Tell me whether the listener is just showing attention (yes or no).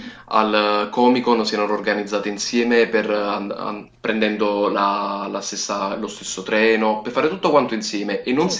yes